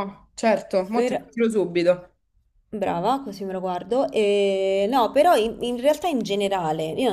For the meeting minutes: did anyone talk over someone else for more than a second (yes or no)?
no